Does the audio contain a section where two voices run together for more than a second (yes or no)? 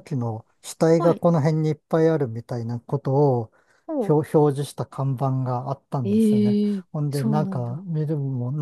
yes